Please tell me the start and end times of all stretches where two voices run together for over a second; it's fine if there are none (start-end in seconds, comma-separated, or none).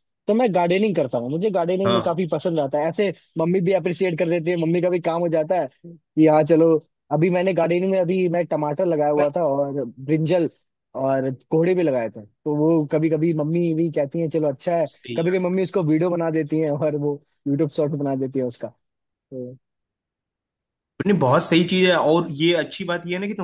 none